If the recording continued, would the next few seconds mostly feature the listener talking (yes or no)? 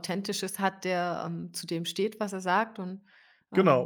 yes